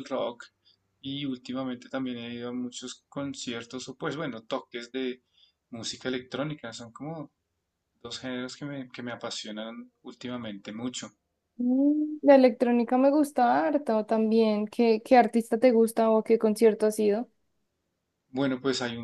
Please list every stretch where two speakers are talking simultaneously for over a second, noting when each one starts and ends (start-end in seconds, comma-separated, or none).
none